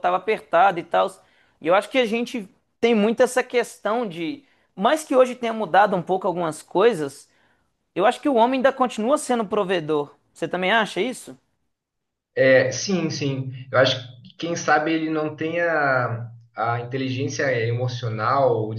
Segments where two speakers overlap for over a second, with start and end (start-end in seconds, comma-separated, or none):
none